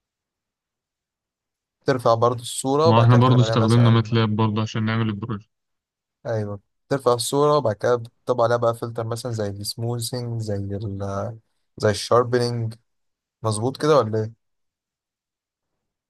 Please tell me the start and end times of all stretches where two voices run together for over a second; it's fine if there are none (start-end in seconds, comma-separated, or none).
2.9-4.2